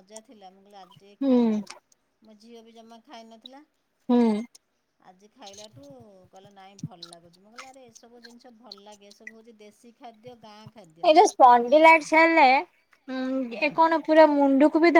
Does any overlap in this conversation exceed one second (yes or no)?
no